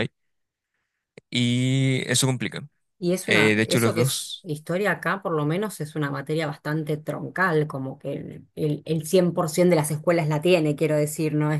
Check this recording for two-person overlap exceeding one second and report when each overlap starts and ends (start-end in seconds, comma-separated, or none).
3.2-4.5